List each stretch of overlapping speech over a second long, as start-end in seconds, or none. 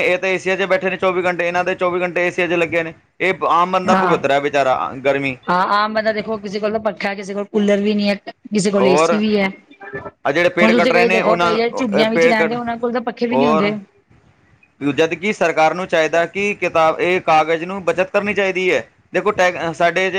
10.2-12.6